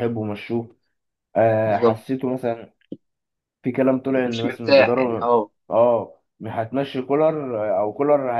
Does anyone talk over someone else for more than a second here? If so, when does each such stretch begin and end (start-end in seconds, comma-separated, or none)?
4.1-5.3